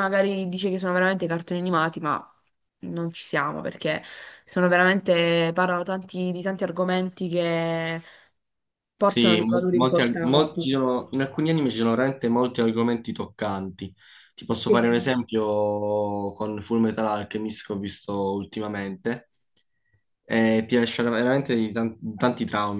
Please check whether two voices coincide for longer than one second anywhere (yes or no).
yes